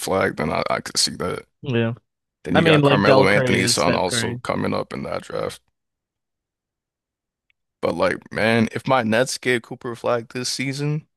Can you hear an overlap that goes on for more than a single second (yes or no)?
yes